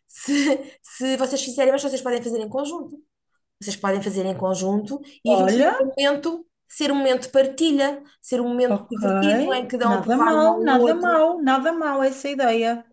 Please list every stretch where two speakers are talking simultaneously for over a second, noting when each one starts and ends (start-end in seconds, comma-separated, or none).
9.8-11.2